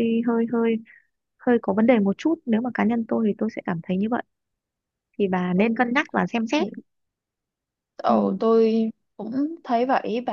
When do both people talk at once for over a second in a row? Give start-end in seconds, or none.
none